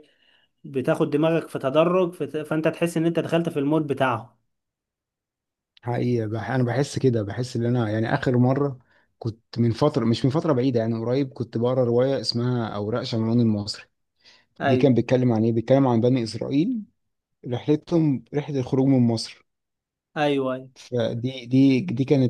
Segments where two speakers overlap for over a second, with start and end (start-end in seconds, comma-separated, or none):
none